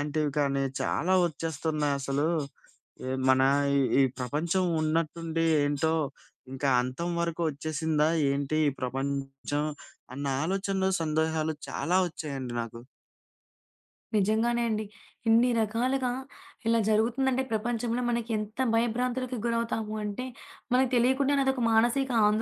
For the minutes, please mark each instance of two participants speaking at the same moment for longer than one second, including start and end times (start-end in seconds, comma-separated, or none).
none